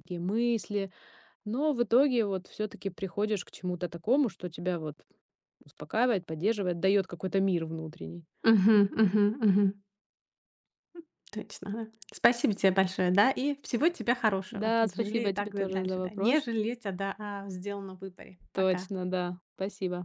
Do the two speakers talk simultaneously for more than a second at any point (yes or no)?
yes